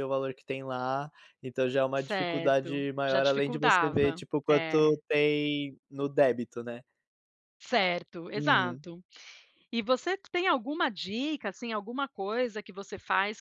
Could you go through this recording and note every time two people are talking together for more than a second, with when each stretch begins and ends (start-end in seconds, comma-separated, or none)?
1.9-5.0